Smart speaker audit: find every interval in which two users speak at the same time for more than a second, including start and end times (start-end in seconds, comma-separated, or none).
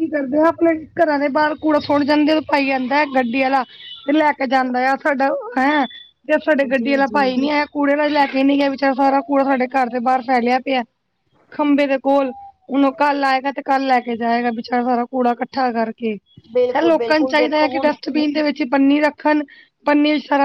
16.5-17.9